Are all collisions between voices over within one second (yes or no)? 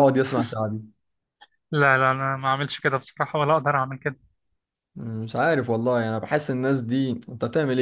yes